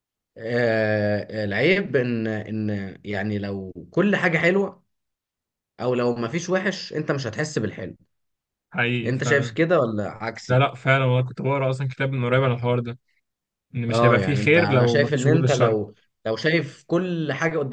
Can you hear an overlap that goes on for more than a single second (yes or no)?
yes